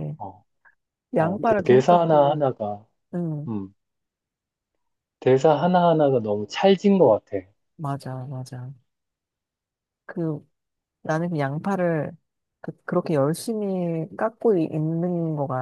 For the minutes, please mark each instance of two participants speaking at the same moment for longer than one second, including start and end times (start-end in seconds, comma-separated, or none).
1.2-2.4